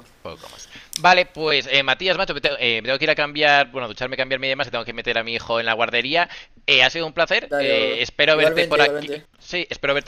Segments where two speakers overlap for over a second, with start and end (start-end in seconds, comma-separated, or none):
7.4-9.2